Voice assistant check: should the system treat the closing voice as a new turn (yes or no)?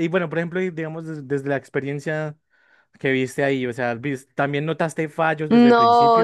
yes